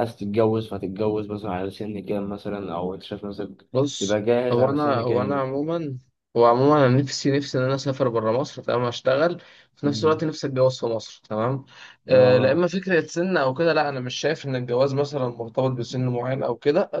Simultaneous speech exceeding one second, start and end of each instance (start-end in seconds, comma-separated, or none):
3.7-5.5